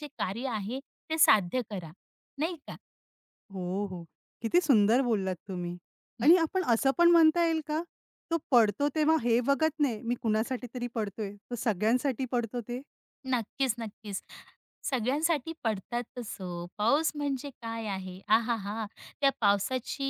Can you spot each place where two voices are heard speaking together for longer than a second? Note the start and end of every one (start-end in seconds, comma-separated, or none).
none